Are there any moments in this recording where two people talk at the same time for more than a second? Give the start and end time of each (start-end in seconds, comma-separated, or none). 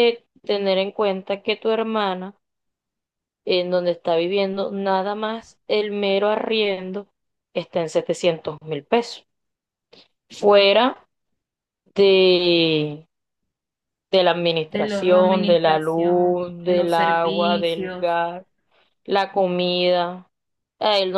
14.7-18.2